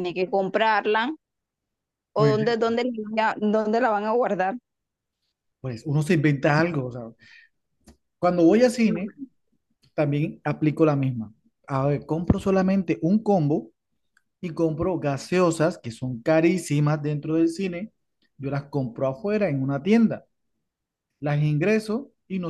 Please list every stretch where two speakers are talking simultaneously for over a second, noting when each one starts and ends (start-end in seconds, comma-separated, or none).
none